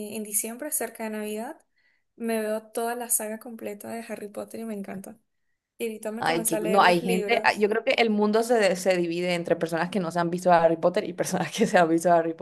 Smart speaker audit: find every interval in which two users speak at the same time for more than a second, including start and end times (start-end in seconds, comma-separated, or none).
6.2-7.7